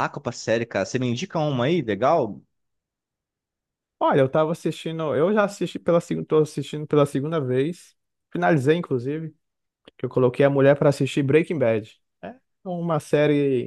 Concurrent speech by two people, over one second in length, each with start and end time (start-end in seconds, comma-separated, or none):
none